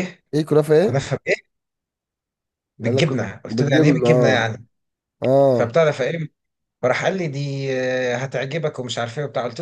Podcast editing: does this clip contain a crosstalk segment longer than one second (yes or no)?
yes